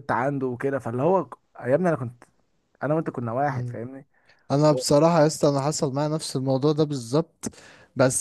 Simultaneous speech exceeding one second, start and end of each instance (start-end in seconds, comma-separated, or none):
none